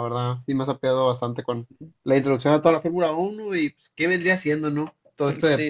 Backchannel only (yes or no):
no